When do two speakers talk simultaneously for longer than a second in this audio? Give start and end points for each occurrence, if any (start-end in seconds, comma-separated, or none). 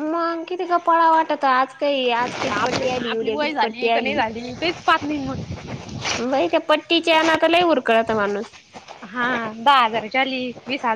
2.6-4.2